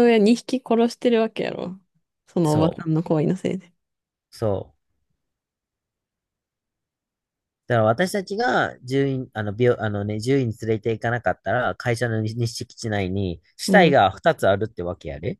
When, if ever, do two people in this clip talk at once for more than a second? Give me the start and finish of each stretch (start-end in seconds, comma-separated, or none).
none